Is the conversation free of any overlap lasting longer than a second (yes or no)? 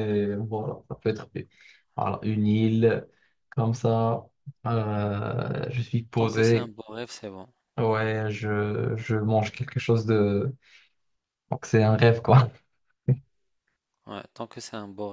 yes